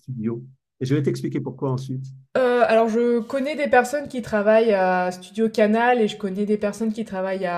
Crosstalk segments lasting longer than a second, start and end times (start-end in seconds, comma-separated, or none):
none